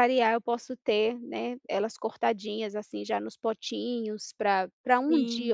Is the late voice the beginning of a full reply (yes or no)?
no